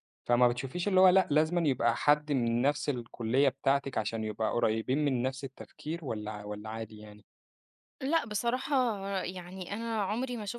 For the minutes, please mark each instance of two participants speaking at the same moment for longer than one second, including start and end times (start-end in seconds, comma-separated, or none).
none